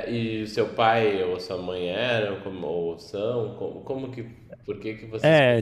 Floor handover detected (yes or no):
yes